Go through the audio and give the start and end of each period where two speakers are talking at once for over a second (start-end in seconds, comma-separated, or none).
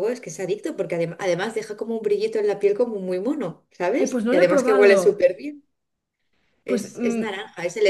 4.0-5.3